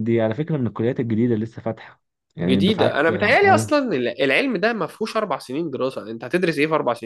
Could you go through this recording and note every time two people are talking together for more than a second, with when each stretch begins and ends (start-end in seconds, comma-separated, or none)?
2.4-3.7